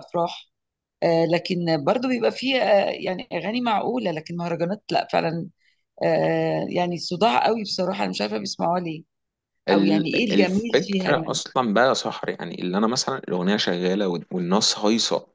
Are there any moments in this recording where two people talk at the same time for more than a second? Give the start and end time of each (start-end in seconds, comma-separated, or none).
9.7-11.4